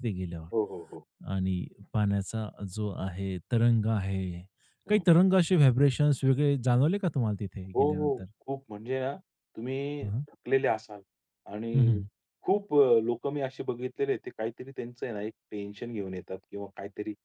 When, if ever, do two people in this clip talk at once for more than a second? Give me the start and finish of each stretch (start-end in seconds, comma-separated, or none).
none